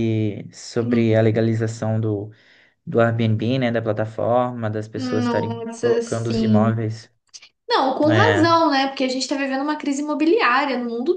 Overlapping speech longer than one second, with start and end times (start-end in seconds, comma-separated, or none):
5.0-6.8